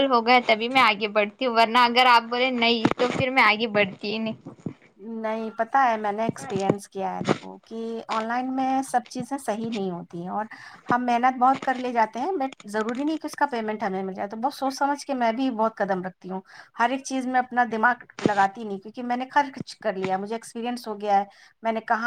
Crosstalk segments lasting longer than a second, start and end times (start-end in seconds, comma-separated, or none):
none